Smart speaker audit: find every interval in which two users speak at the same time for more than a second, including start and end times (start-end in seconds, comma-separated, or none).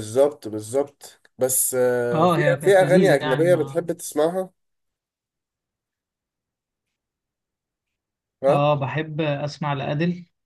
2.1-3.9